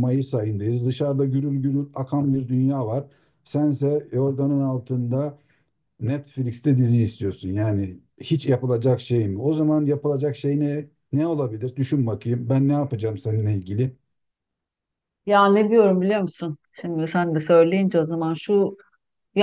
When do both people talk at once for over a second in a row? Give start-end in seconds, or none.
none